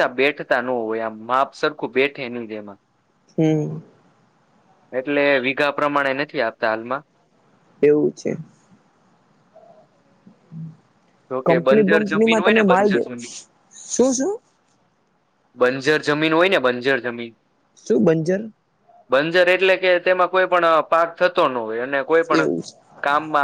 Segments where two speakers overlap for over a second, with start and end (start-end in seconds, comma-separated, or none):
11.5-13.1